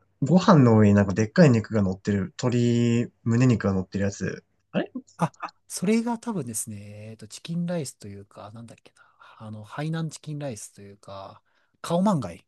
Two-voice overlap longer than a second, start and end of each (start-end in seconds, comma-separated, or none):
none